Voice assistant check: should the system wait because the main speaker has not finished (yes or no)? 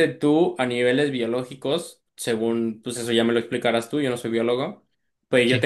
yes